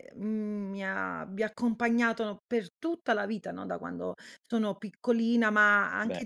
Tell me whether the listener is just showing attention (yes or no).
yes